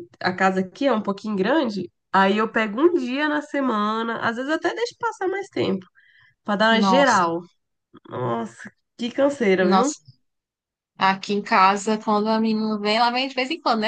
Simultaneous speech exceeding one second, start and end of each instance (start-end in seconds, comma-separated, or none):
none